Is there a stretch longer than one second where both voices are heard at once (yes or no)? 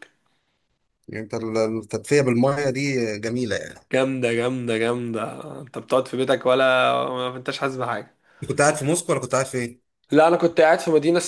no